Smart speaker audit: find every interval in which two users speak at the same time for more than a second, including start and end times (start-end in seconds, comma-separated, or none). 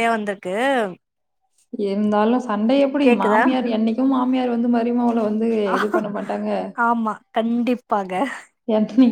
none